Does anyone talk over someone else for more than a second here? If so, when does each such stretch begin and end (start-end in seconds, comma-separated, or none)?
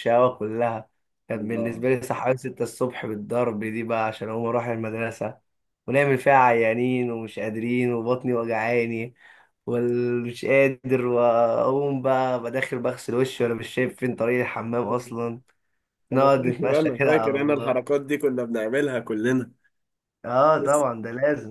16.1-17.9